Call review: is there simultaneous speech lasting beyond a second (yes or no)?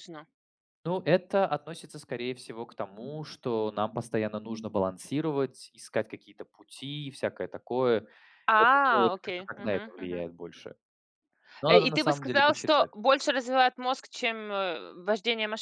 yes